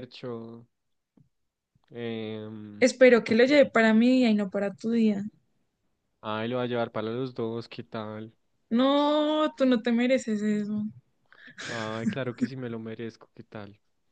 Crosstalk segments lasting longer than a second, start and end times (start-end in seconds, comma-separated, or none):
none